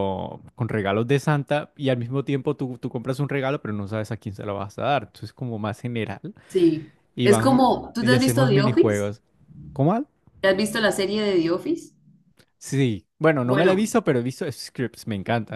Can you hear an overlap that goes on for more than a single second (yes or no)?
yes